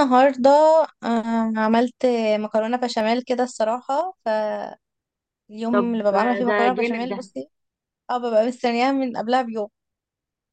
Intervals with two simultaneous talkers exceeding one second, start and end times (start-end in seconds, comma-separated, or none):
5.7-7.3